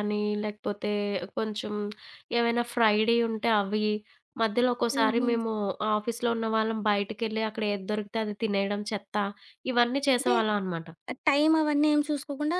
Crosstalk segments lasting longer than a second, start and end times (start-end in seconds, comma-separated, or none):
none